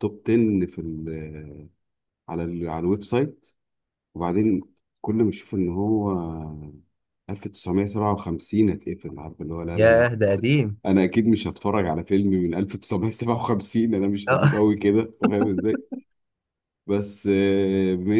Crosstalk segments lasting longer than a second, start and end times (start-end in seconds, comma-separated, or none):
none